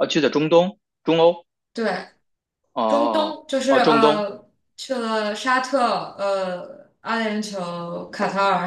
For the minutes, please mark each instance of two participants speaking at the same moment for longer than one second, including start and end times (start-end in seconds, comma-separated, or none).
2.9-4.2